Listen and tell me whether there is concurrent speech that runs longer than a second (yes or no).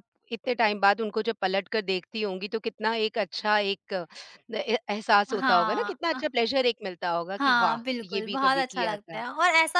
yes